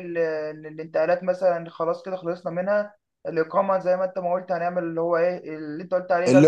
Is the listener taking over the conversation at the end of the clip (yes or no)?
yes